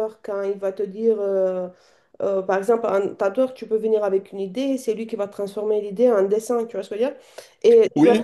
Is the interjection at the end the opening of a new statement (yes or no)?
no